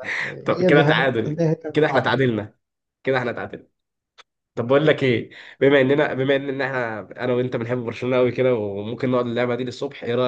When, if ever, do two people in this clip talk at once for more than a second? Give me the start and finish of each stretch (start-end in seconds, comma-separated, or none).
0.6-2.2